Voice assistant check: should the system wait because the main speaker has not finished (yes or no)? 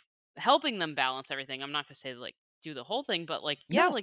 yes